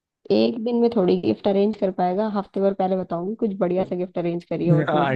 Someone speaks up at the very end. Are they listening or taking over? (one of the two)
taking over